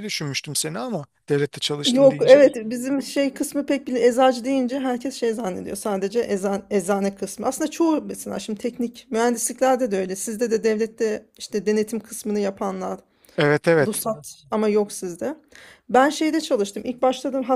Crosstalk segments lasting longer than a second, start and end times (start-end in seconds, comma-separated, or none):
none